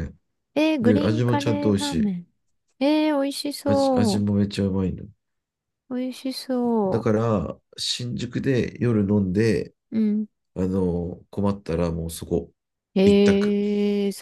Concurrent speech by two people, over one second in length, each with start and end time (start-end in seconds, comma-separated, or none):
0.8-2.1